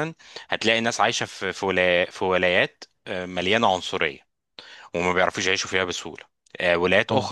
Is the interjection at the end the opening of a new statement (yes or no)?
no